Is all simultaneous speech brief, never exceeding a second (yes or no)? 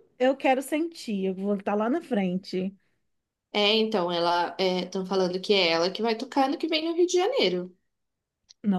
yes